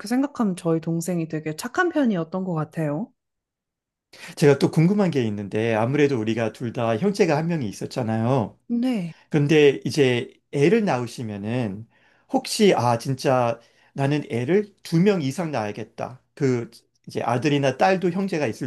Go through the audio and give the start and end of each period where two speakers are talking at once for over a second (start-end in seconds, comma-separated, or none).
none